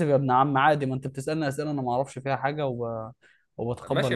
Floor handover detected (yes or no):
yes